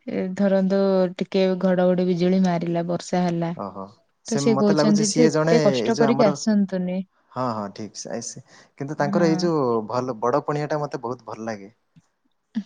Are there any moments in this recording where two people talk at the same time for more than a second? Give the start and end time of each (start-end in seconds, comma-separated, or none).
4.6-6.3